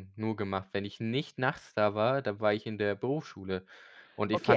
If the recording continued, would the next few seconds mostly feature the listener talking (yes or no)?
yes